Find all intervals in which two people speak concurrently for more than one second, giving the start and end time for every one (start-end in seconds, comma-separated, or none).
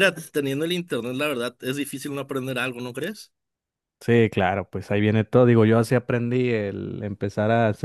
none